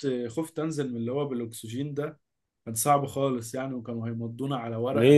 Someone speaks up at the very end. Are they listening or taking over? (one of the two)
taking over